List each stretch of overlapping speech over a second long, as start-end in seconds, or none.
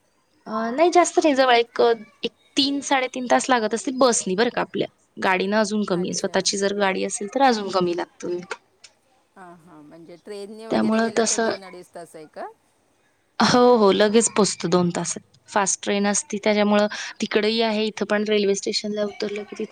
none